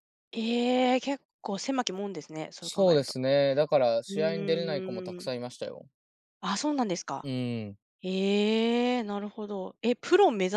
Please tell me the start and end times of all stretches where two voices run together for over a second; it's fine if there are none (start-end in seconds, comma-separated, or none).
4.1-5.3